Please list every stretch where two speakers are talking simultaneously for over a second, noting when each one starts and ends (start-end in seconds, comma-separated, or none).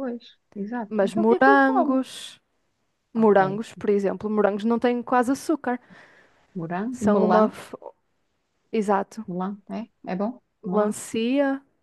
0.9-2.1